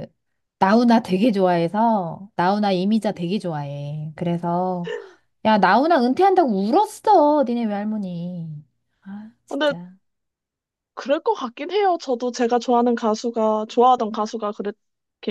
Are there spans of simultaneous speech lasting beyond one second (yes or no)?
no